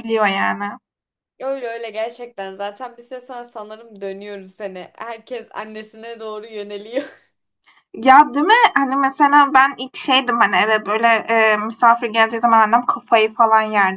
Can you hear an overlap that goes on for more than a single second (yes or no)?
no